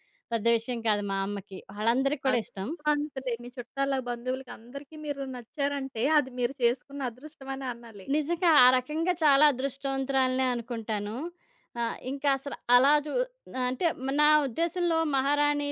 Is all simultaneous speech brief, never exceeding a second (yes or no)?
yes